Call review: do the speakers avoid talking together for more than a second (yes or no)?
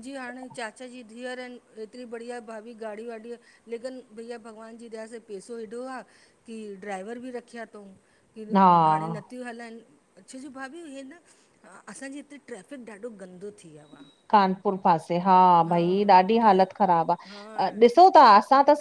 yes